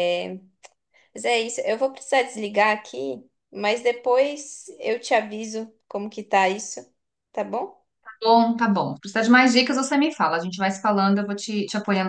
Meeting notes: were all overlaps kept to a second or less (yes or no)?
yes